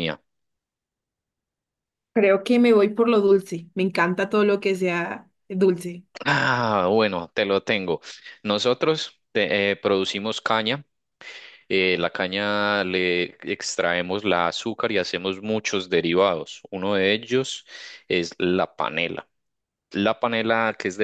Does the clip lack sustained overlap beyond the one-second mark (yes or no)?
yes